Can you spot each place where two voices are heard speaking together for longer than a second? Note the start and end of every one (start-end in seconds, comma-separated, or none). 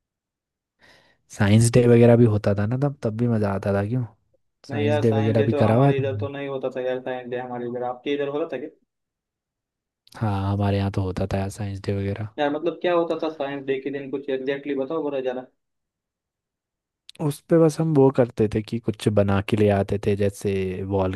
4.7-6.3